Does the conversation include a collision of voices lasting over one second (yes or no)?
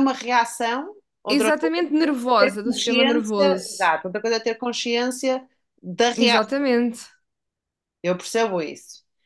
yes